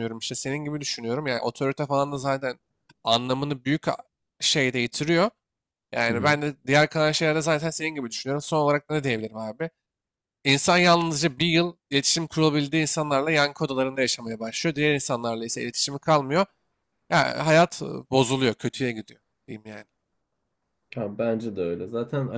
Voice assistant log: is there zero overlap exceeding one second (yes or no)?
yes